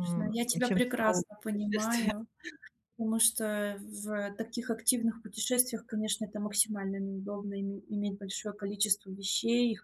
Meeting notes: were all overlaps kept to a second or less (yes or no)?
no